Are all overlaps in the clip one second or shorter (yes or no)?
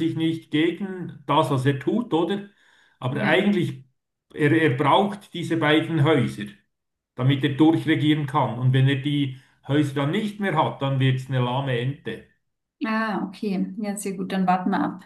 yes